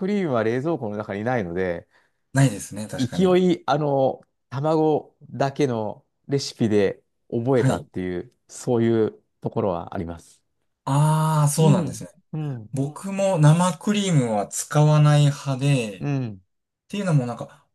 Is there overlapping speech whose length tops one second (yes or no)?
no